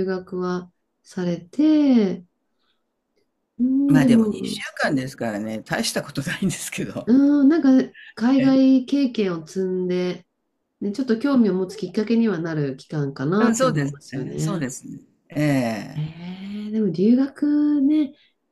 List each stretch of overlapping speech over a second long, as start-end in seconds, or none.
13.4-14.7